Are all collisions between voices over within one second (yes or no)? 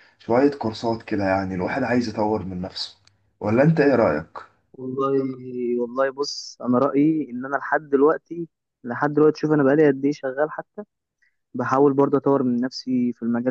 yes